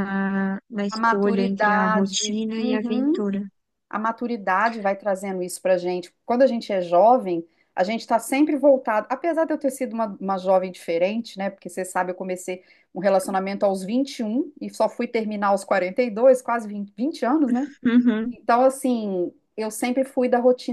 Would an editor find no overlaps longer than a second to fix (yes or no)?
no